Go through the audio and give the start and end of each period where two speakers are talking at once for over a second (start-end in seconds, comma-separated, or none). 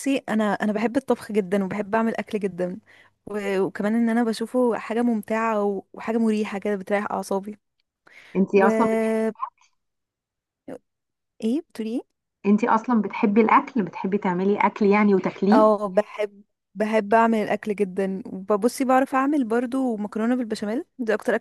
none